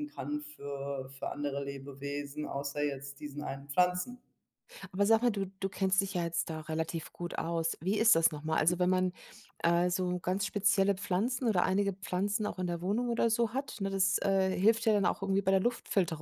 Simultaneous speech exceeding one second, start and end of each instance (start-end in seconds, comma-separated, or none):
none